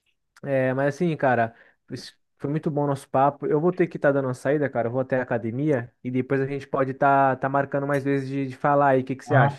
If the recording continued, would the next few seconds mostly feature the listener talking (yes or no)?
yes